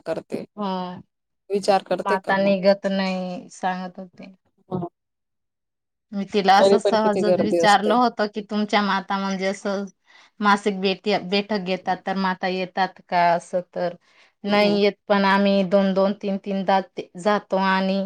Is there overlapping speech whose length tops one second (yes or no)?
yes